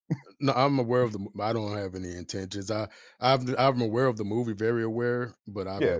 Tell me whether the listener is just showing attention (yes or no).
no